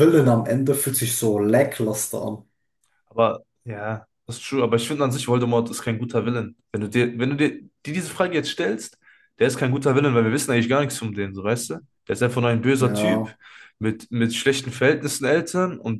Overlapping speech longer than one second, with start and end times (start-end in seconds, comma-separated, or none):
none